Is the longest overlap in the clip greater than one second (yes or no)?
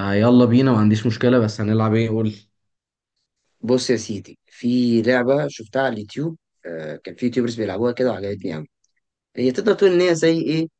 no